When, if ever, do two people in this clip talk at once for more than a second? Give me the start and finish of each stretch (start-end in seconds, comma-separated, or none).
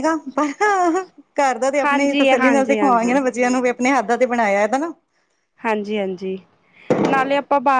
1.8-3.2